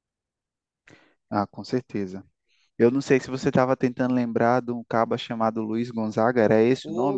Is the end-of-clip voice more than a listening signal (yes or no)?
yes